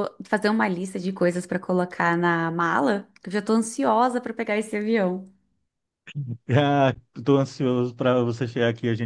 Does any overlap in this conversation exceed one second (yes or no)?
no